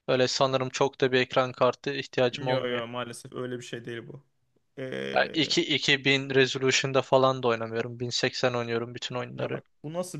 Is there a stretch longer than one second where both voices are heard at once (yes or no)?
no